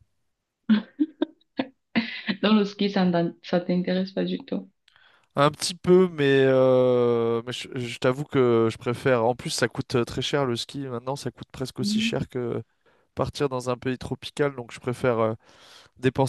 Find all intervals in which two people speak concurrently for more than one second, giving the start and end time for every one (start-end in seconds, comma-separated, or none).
none